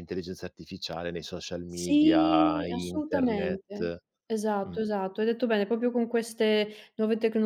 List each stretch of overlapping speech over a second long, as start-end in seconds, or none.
1.7-3.9